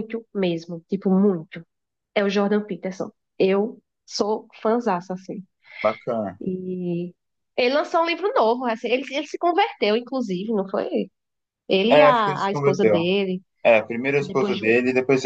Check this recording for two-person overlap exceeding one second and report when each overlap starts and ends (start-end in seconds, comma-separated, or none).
11.9-13.1